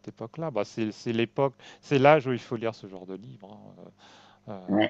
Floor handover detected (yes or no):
yes